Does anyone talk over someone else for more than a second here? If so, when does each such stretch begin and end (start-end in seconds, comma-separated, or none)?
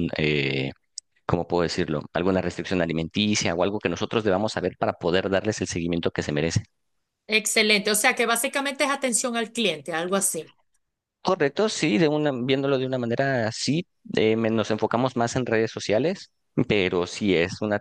none